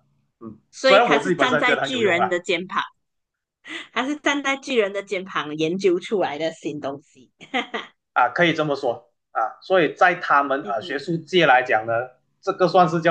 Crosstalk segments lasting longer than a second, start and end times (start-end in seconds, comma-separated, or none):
0.7-2.4